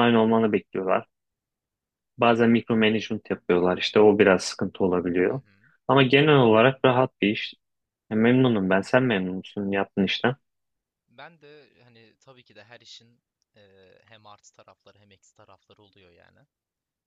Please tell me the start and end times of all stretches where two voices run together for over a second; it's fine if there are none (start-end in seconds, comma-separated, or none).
none